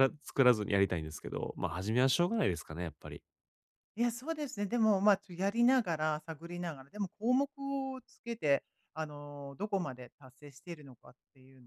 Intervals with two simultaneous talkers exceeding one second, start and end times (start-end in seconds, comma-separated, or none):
none